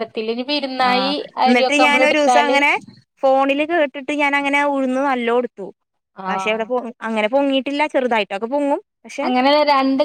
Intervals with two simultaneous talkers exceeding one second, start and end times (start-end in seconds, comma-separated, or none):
0.9-2.6